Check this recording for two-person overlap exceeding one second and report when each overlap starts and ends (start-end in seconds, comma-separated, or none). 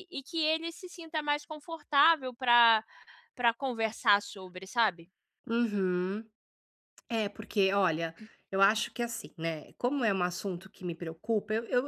none